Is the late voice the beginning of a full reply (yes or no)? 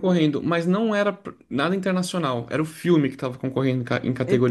yes